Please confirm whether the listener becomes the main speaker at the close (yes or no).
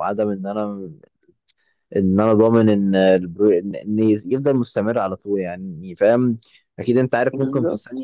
no